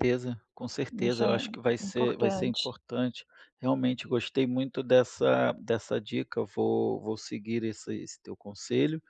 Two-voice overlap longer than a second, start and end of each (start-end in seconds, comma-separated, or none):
1.0-2.7